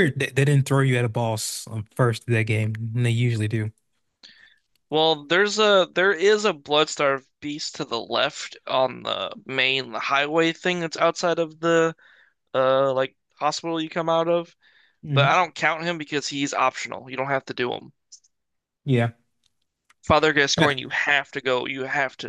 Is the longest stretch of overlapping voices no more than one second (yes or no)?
yes